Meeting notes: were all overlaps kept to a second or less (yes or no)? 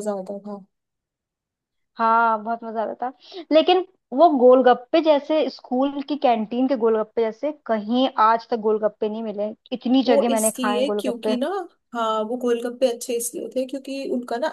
no